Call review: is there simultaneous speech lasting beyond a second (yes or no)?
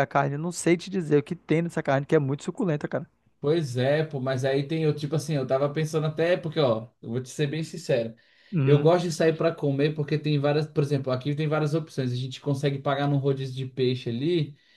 no